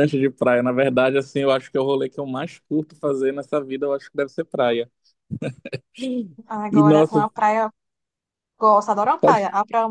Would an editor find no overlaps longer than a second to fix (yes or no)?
yes